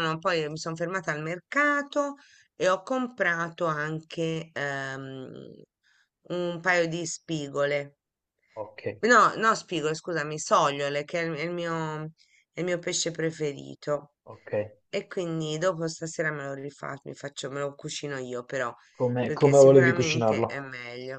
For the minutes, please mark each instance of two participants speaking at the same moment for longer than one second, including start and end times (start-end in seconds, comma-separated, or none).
19.2-20.7